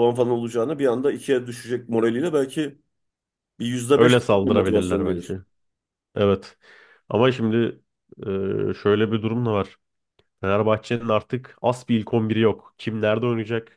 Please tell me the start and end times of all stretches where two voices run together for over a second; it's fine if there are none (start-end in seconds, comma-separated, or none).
4.0-5.3